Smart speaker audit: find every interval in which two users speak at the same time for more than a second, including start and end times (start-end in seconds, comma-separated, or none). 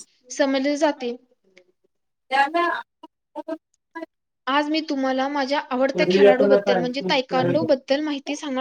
6.4-7.7